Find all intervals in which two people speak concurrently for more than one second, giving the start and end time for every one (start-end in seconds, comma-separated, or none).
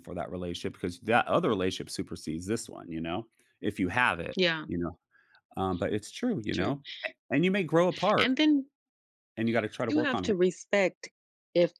none